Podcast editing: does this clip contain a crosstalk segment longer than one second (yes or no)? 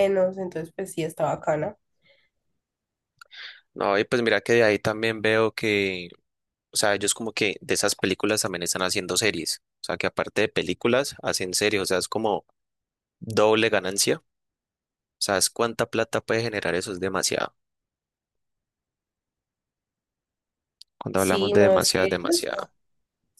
yes